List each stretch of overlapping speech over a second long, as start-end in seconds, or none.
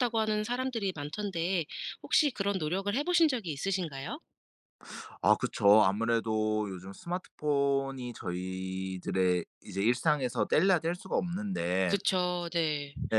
none